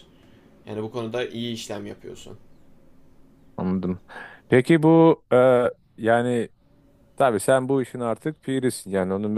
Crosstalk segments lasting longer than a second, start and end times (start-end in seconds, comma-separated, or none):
none